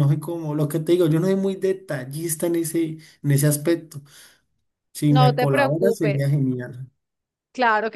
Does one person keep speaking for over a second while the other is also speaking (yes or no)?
yes